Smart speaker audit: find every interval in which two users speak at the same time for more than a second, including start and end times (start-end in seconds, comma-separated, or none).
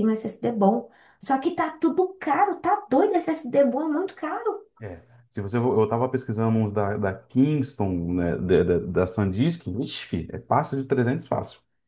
none